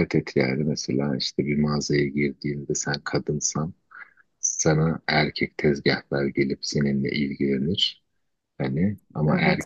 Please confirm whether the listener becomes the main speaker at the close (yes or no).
no